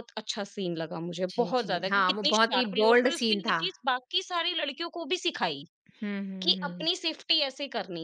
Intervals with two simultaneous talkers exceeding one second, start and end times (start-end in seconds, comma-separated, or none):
1.3-3.6